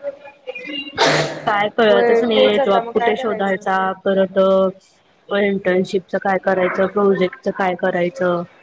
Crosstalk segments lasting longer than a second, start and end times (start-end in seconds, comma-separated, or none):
1.9-3.6